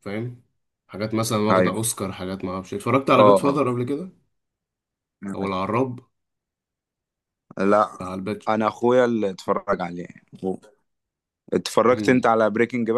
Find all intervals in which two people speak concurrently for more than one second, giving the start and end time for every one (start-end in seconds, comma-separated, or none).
none